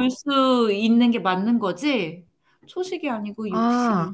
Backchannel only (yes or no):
no